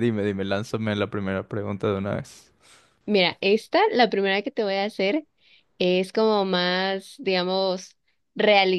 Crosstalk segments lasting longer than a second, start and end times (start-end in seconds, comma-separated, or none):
none